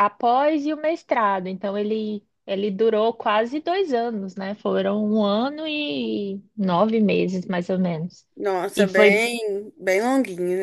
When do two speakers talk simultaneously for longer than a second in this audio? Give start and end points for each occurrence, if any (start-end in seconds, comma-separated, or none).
none